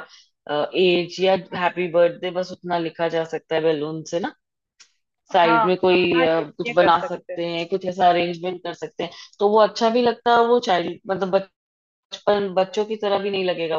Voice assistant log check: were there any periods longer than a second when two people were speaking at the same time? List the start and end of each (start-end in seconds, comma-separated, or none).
5.3-7.4